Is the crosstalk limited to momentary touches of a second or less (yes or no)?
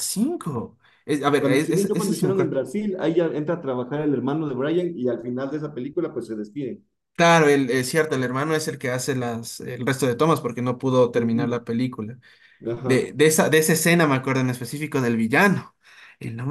no